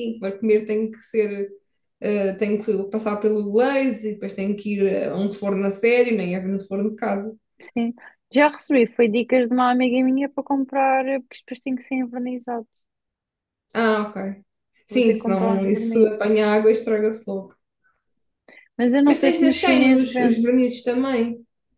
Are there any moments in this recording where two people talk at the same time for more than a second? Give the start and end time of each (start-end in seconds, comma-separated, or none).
14.9-16.2, 19.1-20.5